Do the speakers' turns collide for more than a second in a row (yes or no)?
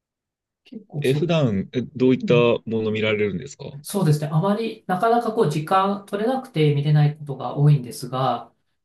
no